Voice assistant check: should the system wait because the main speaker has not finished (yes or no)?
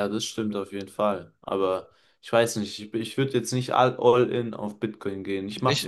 yes